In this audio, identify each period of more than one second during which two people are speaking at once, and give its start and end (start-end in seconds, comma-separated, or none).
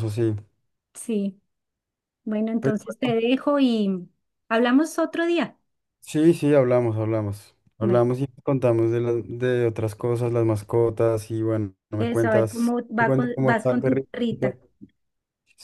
12.0-14.1